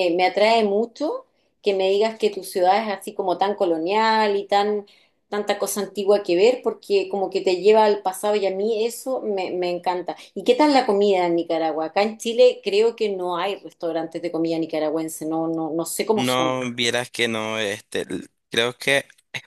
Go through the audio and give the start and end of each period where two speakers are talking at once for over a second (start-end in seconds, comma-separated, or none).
none